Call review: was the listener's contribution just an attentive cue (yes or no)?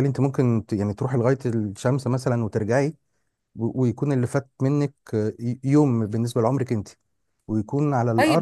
no